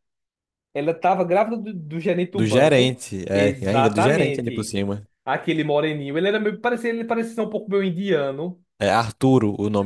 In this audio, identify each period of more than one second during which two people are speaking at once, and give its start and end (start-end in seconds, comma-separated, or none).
2.3-4.8